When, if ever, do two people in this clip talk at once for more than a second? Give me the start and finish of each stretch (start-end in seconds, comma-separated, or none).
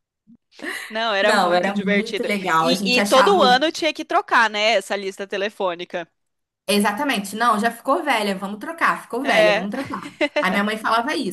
1.2-3.6